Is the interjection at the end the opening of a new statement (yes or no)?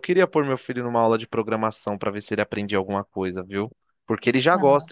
no